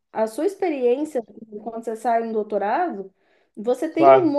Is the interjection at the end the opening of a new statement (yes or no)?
no